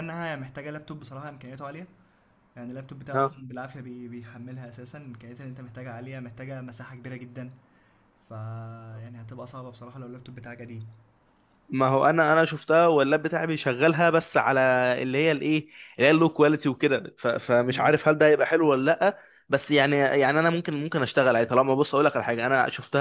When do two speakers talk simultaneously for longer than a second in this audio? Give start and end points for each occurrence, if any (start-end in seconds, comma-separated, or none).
none